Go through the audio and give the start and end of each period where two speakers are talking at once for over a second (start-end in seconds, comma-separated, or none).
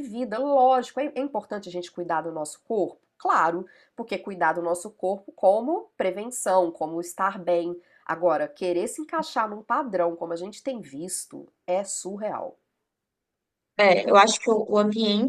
none